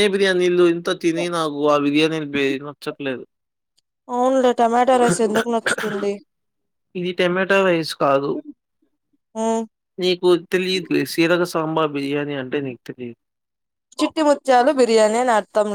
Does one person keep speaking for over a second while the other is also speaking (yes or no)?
no